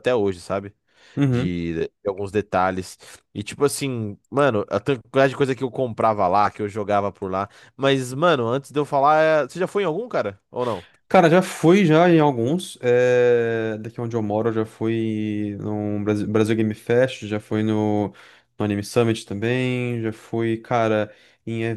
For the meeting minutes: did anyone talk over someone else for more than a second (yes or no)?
no